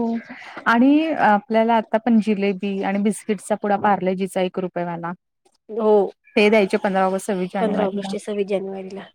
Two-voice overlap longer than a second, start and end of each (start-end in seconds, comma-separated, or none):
none